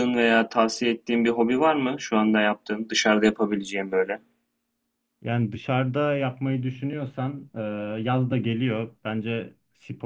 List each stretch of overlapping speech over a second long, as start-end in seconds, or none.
none